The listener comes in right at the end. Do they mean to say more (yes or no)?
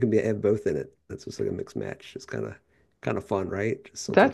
yes